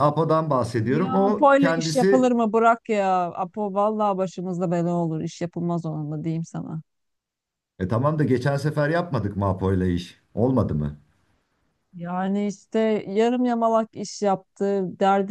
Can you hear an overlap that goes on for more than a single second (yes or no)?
yes